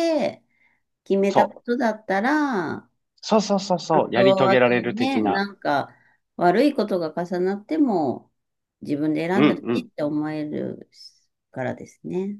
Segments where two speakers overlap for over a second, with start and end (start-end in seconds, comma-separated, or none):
3.9-5.4